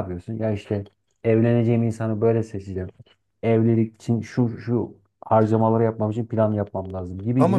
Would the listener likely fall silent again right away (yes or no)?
no